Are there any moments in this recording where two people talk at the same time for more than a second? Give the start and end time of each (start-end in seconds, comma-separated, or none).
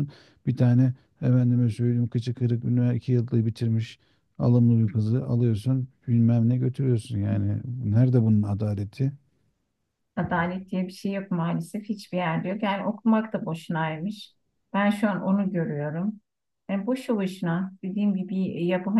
none